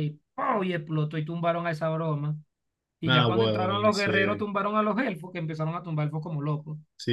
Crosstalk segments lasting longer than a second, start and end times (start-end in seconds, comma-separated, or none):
3.0-4.5